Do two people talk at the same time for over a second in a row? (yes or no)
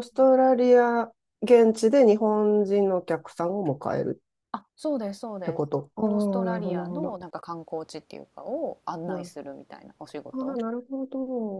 yes